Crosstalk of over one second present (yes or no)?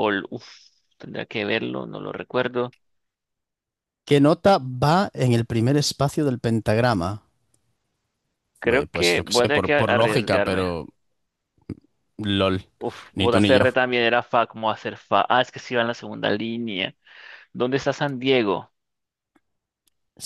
yes